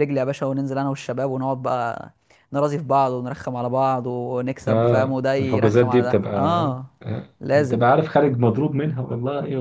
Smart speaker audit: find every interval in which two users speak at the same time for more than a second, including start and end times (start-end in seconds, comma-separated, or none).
4.7-6.3